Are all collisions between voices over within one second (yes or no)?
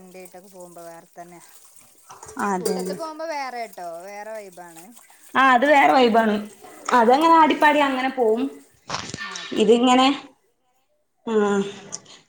yes